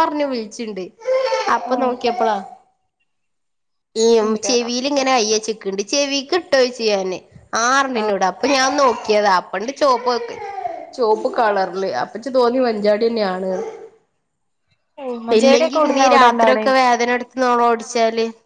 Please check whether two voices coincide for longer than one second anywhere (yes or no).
yes